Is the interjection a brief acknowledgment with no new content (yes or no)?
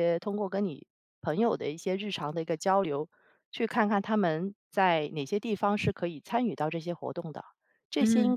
yes